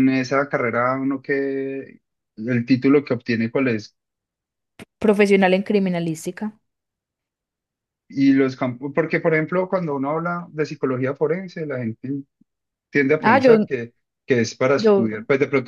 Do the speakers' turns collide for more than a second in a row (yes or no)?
no